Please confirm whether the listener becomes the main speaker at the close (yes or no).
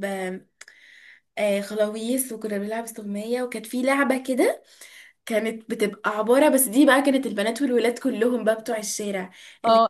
no